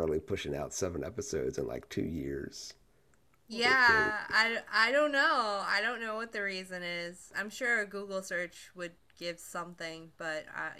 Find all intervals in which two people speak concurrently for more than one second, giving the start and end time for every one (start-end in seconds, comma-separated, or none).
none